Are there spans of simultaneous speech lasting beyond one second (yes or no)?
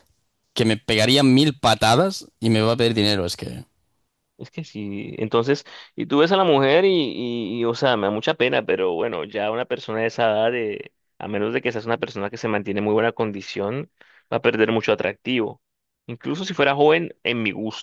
no